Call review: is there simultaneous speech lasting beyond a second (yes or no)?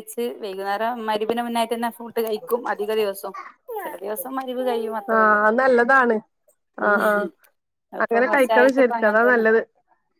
yes